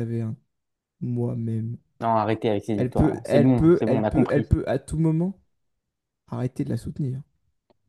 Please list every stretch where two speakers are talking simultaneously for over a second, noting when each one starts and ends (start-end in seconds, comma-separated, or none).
2.8-4.5